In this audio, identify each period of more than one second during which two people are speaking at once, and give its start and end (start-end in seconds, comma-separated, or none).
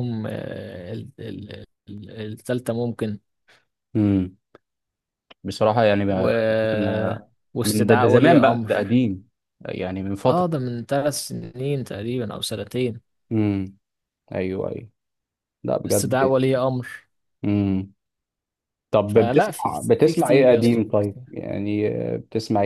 7.5-8.9, 19.1-21.2